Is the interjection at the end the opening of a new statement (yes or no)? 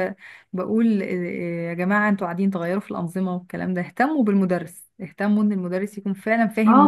yes